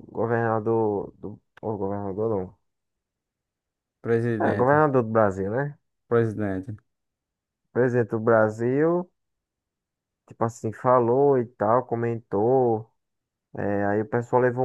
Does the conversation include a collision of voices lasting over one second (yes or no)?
no